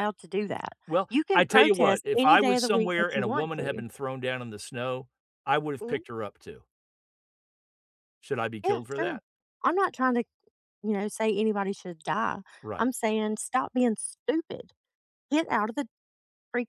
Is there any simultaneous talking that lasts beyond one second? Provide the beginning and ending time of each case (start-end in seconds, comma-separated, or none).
0.9-3.8